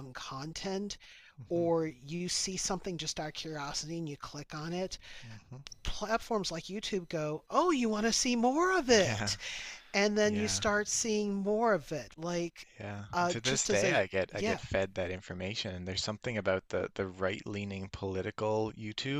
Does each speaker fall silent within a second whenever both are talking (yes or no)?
no